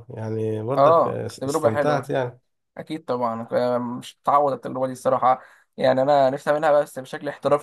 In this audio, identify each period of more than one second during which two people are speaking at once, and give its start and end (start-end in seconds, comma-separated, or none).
0.8-2.1